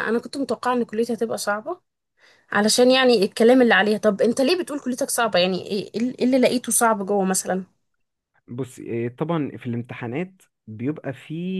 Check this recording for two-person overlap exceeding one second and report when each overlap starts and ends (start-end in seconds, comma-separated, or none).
none